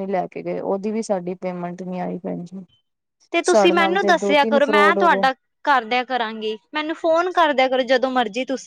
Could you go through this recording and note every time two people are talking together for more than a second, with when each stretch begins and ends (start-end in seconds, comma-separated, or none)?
3.5-5.2